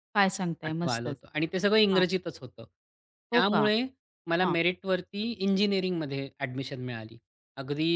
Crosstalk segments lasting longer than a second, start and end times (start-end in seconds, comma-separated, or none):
none